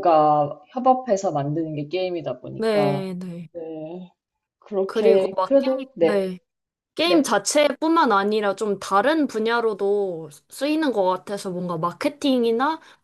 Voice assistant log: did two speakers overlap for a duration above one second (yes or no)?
yes